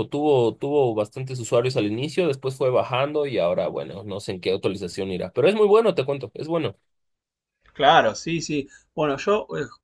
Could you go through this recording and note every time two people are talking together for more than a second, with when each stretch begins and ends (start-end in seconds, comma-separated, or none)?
none